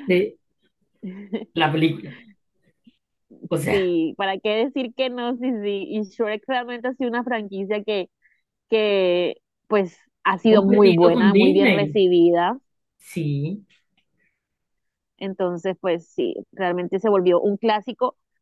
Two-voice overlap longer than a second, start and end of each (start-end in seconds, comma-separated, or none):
10.4-12.0